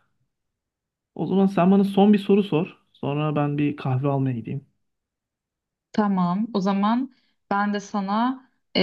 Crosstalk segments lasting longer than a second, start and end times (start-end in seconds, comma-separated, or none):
none